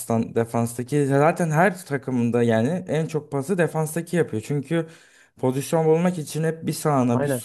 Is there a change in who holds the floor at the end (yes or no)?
no